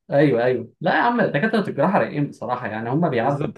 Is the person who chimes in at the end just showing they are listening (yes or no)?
no